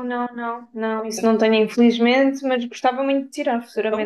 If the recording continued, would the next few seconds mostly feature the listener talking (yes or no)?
yes